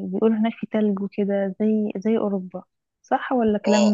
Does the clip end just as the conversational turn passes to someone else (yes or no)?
yes